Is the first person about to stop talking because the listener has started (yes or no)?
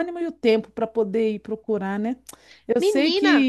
no